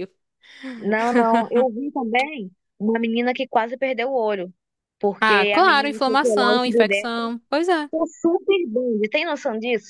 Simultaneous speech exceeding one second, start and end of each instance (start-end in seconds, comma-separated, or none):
5.2-7.3